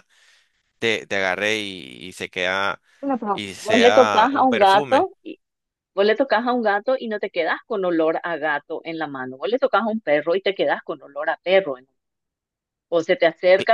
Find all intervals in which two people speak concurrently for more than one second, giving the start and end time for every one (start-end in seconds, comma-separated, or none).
3.3-5.1